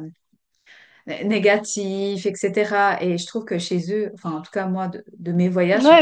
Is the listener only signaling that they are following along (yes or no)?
no